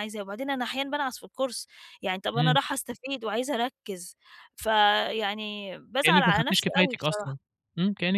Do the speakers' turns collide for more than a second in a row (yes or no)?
yes